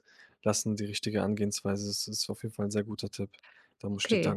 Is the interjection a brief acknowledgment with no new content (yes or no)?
no